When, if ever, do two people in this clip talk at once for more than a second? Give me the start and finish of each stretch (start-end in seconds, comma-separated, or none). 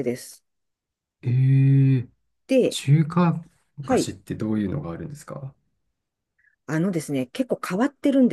none